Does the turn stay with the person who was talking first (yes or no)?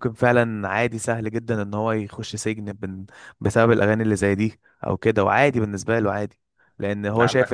yes